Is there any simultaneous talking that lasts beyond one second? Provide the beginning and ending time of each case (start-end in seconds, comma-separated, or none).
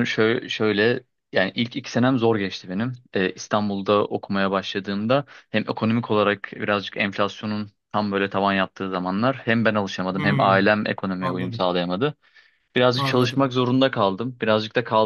none